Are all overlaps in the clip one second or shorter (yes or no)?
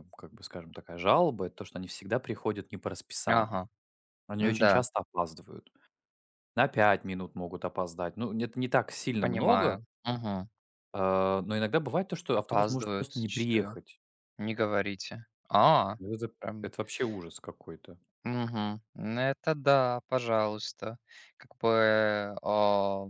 no